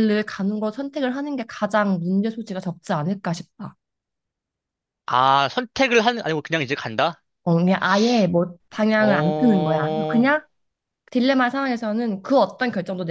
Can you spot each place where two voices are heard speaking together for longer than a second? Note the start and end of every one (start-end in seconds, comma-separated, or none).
9.0-10.3